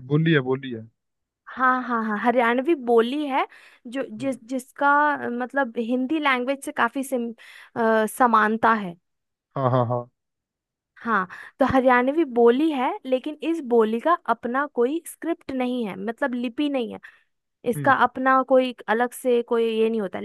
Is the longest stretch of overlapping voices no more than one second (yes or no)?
yes